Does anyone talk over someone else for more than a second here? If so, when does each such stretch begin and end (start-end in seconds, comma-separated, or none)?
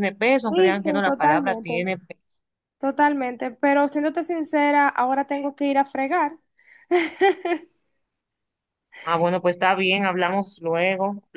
0.5-1.9